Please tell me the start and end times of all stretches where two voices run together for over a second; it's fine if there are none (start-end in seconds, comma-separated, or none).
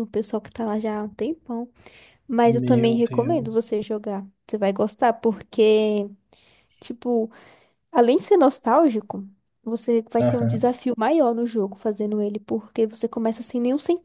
2.5-3.7